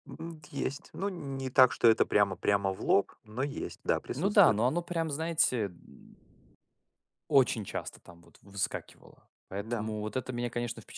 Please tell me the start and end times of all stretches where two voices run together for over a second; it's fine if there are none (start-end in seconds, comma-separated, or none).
none